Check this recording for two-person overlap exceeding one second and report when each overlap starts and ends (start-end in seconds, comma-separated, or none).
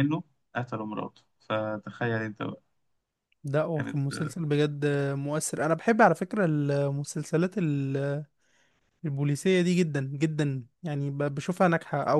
none